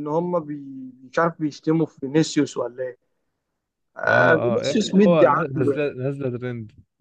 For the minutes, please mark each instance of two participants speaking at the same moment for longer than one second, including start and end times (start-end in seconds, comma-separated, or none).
4.1-5.9